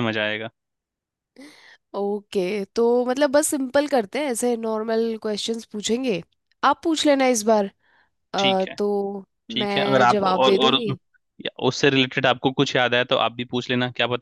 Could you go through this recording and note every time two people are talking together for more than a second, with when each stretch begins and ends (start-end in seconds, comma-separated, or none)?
9.5-10.9